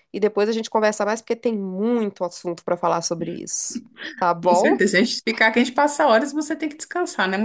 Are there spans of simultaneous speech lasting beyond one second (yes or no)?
no